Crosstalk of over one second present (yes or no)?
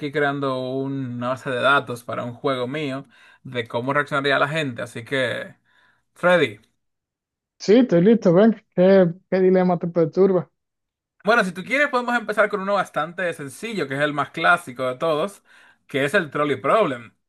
no